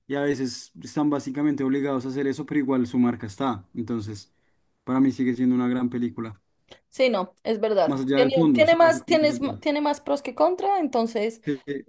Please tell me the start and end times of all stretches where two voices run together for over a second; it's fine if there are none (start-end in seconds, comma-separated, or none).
7.8-9.6